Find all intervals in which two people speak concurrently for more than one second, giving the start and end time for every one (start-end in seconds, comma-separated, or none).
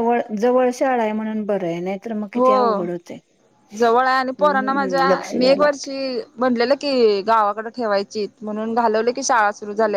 4.4-5.9